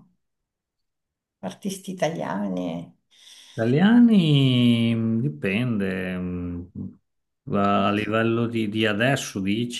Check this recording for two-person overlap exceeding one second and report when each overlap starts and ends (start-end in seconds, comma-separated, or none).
none